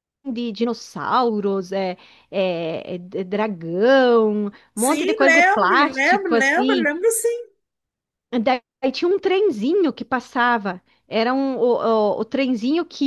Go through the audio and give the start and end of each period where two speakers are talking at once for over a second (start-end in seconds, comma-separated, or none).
4.7-6.9